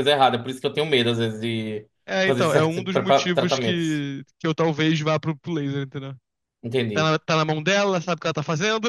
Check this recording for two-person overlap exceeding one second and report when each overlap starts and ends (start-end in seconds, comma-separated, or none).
2.2-4.0